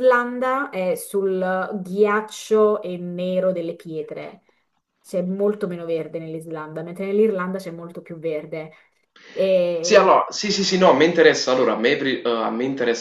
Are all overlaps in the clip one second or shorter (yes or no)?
yes